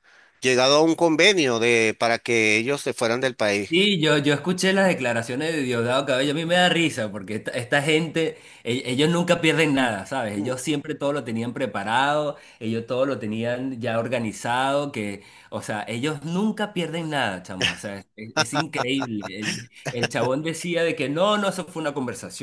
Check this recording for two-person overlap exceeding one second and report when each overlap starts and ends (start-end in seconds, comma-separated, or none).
none